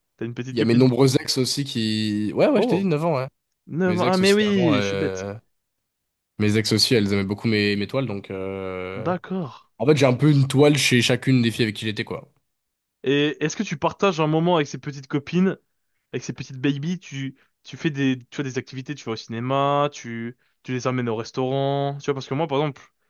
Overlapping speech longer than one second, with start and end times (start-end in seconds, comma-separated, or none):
3.9-5.3